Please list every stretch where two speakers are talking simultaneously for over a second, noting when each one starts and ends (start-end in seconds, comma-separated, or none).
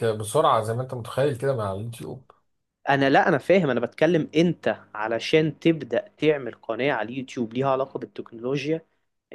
none